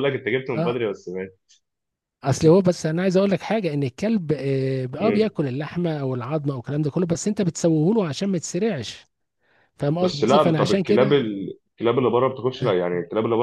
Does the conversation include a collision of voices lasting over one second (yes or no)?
yes